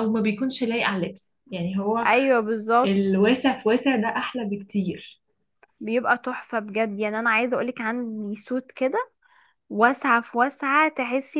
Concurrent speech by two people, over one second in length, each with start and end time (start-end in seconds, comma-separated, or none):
none